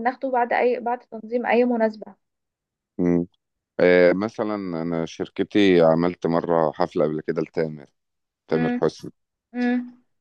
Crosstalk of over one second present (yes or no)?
no